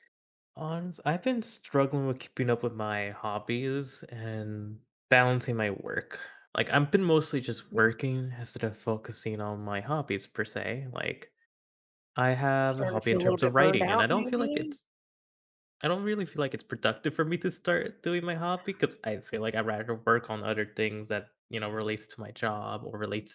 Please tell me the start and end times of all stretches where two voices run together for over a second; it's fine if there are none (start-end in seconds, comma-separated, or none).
12.6-14.8